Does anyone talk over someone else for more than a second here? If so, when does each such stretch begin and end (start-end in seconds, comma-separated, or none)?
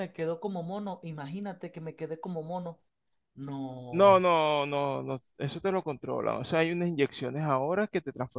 none